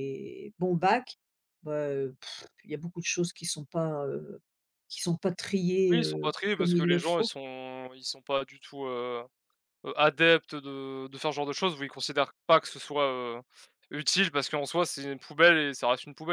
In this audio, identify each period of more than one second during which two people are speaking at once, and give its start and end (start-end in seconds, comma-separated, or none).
5.9-7.3